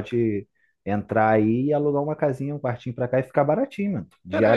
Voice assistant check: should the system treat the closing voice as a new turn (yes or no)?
yes